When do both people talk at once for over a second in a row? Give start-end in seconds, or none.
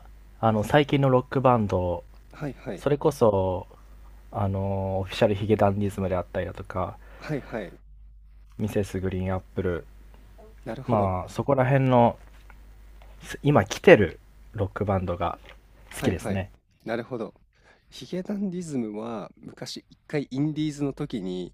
none